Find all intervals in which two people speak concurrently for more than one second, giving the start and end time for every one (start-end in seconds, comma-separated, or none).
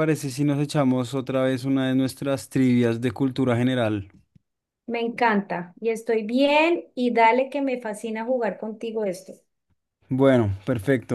none